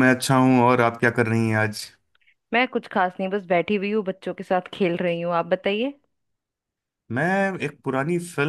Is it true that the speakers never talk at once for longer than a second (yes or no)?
yes